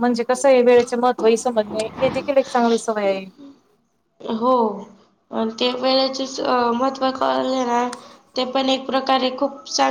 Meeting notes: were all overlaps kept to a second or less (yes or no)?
yes